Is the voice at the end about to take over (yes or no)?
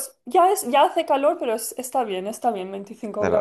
yes